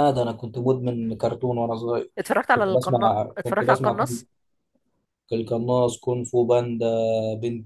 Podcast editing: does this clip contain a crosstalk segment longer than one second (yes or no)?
yes